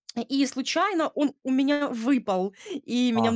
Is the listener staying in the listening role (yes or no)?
yes